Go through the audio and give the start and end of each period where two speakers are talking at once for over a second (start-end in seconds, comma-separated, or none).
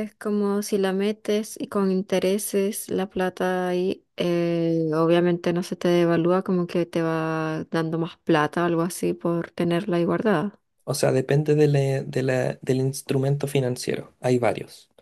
none